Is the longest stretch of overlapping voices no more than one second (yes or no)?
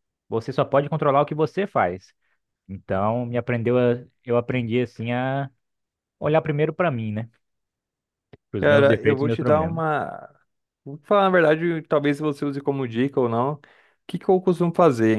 no